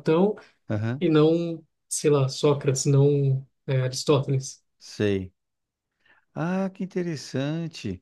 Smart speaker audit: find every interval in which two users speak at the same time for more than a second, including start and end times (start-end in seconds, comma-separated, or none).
none